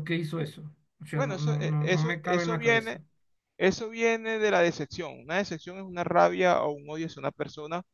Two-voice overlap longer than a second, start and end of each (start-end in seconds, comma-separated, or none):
1.1-3.0